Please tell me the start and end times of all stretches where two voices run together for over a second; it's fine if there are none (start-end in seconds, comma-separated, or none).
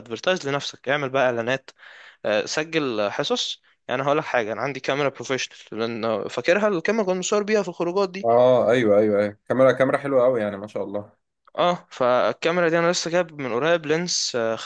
none